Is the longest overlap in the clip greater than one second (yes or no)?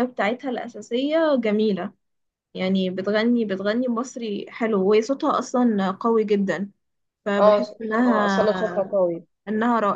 yes